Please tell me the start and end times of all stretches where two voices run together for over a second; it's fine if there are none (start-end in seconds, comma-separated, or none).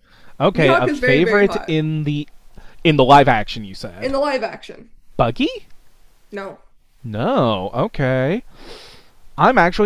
0.6-1.8